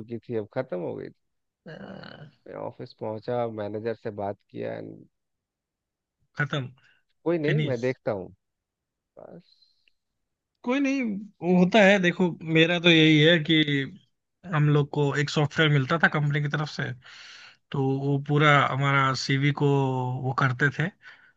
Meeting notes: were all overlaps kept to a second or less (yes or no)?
yes